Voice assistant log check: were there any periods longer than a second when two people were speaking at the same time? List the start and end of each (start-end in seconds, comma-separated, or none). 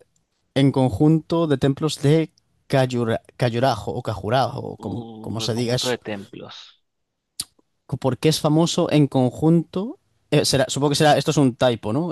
4.8-6.0